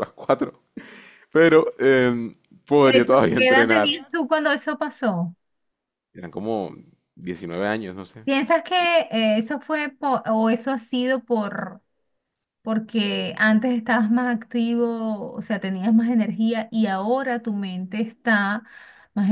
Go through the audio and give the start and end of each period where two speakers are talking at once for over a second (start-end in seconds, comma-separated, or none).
2.8-4.1